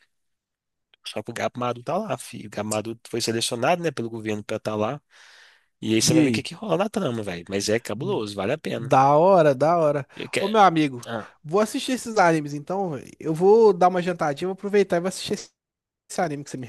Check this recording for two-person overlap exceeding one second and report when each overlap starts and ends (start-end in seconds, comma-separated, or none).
none